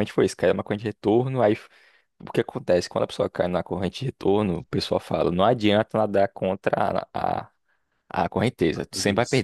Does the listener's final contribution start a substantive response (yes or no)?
no